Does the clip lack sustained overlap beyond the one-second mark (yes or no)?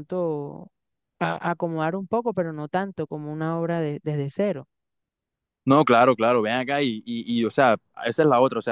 yes